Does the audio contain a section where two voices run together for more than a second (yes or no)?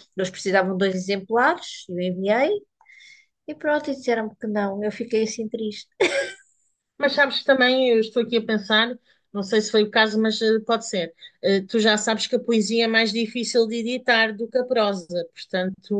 no